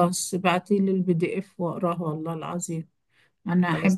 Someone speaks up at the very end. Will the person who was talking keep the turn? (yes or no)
yes